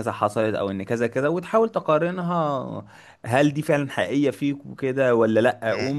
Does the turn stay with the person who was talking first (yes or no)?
yes